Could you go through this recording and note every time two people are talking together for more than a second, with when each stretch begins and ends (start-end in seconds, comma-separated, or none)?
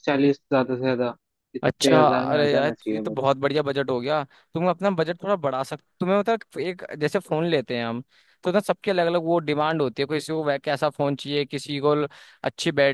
1.6-3.3